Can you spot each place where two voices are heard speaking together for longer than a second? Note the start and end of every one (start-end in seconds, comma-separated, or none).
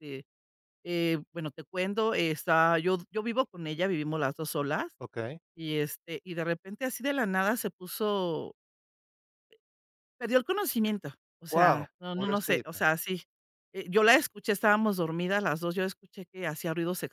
11.5-12.9